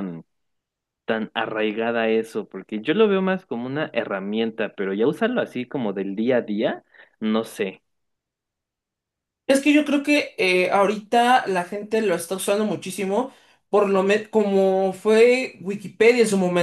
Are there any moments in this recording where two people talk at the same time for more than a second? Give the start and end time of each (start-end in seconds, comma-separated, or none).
none